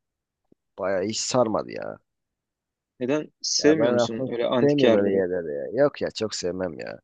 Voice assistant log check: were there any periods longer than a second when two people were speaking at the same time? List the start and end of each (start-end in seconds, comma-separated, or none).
3.6-5.2